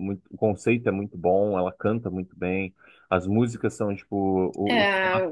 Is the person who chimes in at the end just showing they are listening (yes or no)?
yes